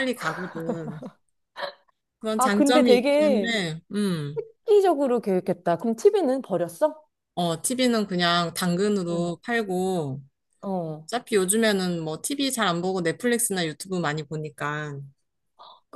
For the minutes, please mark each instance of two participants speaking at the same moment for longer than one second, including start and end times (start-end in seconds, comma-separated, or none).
2.4-3.6